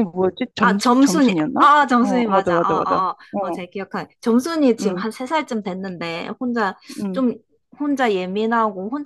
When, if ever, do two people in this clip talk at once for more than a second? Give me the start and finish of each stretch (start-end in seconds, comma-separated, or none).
0.6-3.6